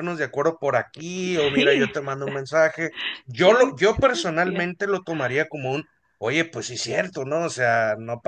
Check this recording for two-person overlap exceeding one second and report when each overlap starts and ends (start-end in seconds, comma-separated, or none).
3.4-4.7